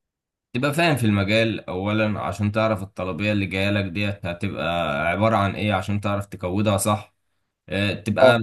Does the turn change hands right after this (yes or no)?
no